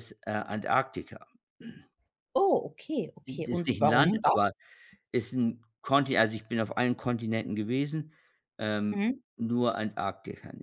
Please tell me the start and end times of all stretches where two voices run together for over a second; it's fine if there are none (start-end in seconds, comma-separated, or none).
3.3-4.5